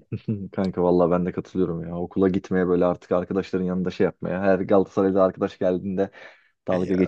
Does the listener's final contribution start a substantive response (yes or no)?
no